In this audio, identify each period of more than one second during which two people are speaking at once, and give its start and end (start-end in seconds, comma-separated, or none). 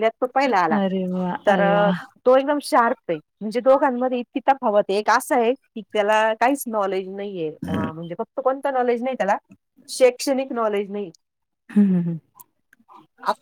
none